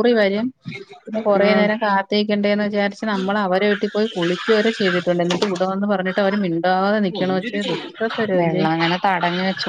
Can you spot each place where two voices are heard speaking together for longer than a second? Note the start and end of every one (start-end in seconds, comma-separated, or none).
none